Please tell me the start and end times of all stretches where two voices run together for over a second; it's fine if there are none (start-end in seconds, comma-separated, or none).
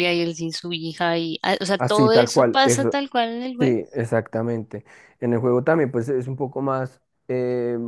1.8-3.0